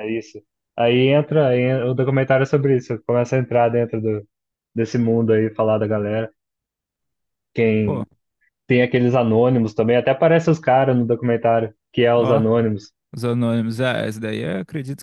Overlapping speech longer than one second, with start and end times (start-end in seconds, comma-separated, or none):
none